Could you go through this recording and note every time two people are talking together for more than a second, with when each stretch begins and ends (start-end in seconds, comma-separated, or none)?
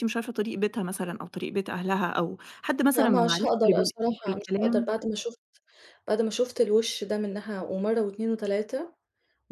3.0-5.0